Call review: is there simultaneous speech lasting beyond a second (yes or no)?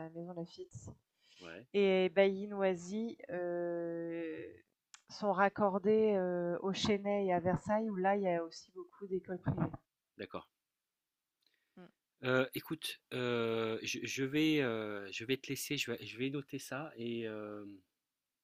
no